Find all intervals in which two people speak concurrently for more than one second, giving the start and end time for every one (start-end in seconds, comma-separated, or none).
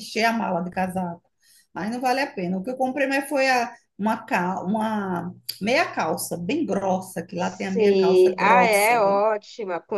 7.4-9.2